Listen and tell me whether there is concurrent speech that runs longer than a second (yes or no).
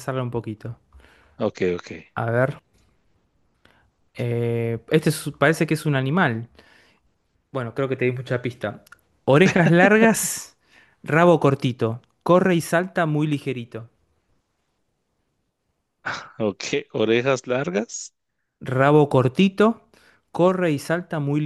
no